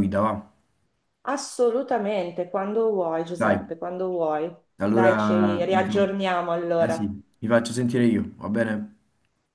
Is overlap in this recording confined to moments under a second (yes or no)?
no